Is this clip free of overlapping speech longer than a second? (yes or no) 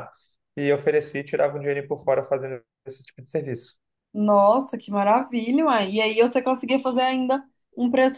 yes